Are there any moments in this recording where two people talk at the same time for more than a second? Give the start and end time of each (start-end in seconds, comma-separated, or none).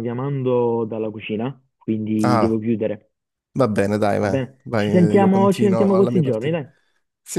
4.2-6.5